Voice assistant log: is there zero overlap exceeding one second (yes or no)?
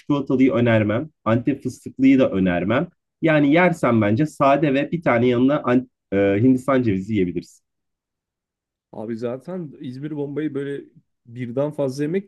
yes